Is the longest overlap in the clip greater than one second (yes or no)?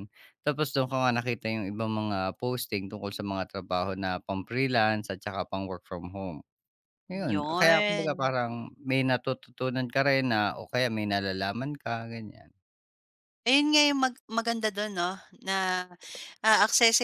yes